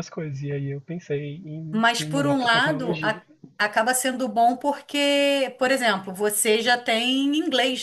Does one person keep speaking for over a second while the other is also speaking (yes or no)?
yes